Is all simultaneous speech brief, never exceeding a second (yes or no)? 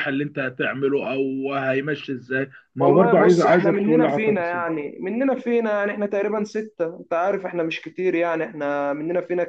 no